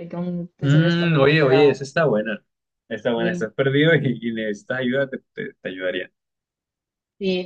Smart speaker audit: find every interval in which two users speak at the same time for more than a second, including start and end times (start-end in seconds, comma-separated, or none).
0.6-1.8